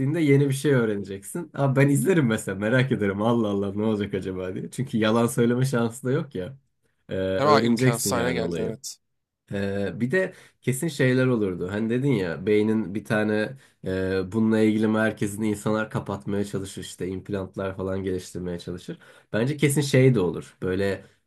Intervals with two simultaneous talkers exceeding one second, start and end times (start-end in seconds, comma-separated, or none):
7.4-8.8